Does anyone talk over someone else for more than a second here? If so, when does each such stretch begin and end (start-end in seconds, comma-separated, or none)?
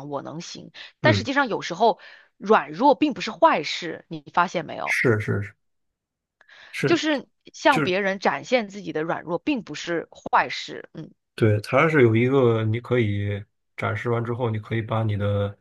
none